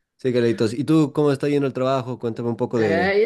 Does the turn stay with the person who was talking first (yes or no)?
no